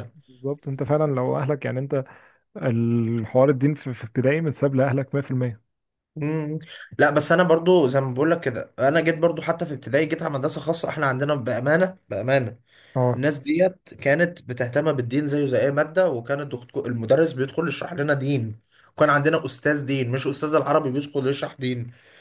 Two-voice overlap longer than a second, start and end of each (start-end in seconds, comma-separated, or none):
none